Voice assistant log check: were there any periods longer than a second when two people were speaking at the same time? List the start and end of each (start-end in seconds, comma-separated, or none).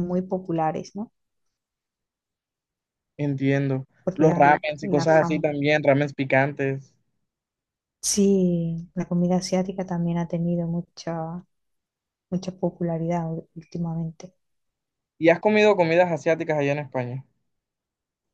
4.0-5.5